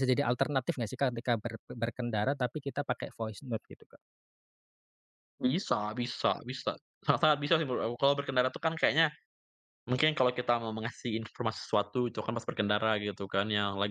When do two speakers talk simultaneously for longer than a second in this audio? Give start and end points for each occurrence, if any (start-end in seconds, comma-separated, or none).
none